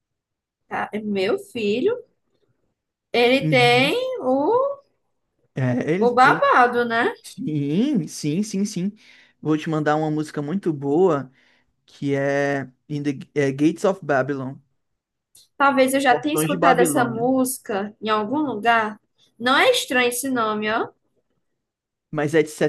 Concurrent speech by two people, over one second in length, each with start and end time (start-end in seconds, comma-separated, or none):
16.1-17.3